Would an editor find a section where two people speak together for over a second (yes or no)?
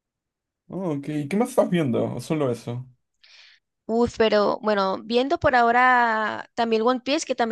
no